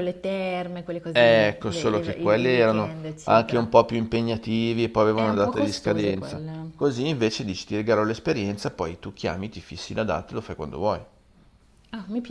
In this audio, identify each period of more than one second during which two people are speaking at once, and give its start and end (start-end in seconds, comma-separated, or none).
1.1-3.7, 5.1-6.7